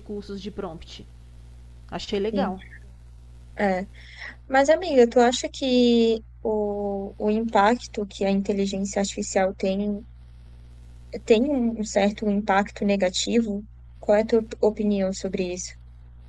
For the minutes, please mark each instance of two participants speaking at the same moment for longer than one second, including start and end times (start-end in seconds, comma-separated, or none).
none